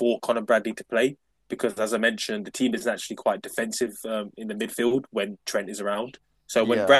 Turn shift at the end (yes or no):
no